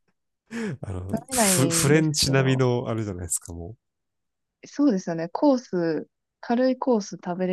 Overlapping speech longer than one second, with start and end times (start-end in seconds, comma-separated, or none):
1.1-2.7